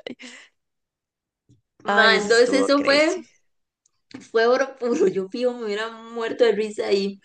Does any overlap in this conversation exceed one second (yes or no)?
yes